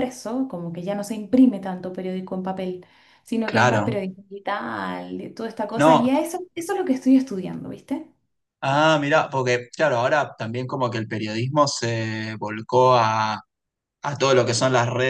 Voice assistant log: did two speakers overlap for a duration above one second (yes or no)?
no